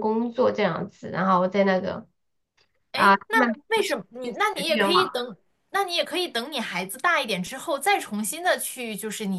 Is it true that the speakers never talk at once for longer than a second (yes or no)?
no